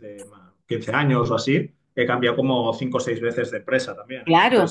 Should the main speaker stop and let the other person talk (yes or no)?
yes